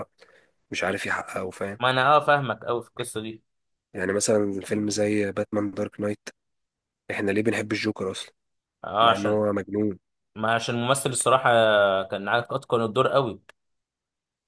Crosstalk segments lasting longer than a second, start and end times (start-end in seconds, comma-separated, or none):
none